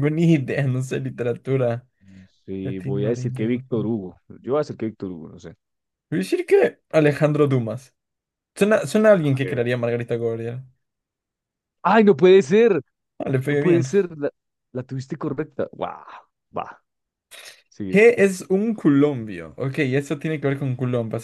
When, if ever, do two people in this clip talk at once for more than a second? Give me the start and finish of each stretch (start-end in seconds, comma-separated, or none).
2.6-3.9